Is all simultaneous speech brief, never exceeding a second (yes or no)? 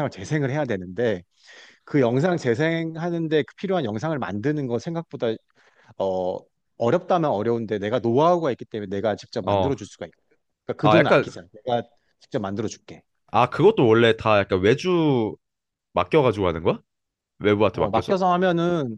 yes